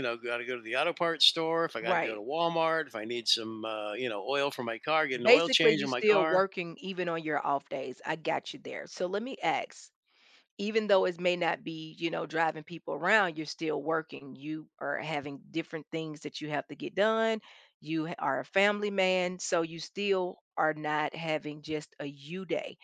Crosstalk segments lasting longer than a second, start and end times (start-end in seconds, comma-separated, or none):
5.2-6.5